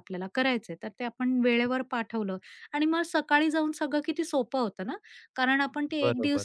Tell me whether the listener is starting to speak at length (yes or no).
no